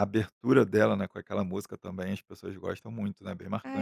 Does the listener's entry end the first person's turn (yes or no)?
yes